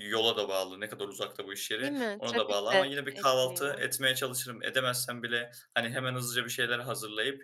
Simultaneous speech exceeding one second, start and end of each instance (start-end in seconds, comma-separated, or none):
1.8-3.9